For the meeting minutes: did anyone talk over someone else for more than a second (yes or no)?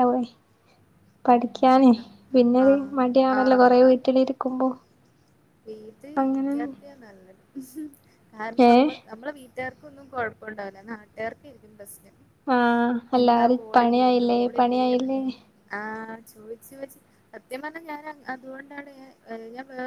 yes